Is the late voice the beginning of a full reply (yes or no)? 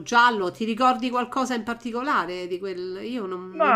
yes